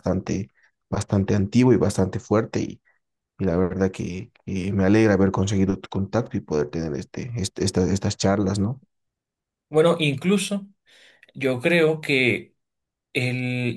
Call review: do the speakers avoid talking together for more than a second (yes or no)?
yes